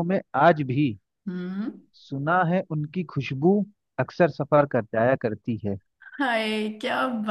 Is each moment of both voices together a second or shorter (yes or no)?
yes